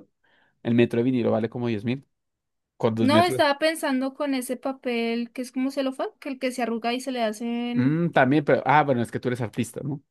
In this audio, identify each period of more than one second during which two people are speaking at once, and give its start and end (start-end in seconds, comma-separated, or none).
none